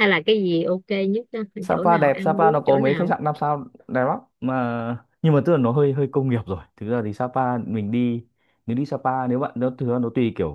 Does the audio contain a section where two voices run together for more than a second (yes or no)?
yes